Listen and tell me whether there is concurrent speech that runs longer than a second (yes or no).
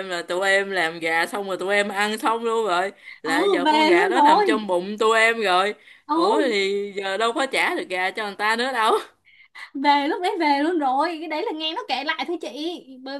yes